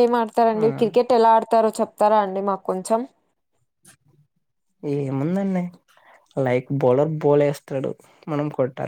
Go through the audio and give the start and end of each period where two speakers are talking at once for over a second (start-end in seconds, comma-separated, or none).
none